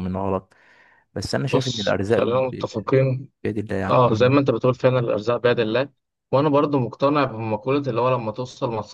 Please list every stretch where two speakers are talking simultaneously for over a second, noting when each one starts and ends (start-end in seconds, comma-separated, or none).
1.5-2.7